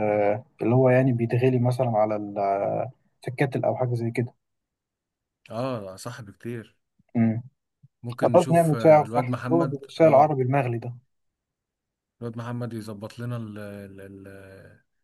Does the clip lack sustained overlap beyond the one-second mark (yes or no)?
no